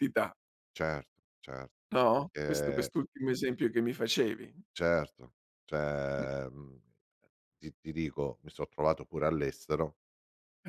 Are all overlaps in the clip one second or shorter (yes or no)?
yes